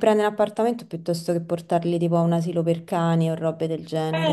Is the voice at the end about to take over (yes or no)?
yes